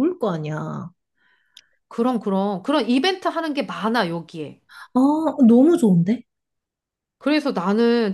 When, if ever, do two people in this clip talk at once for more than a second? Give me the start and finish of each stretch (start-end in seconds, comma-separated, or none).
none